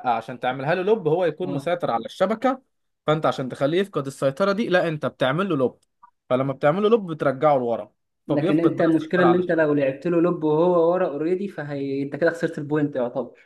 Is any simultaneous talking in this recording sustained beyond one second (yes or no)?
yes